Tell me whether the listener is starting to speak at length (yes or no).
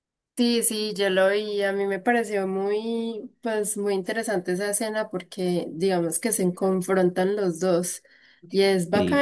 no